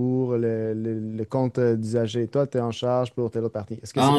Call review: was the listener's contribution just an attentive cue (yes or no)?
no